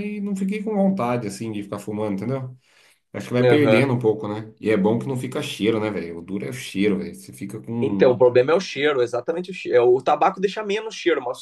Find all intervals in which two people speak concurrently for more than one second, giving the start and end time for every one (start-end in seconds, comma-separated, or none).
none